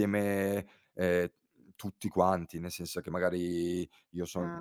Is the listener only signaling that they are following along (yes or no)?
yes